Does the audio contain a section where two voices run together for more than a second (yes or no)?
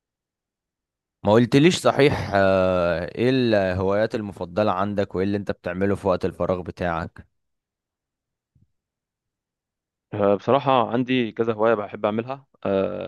no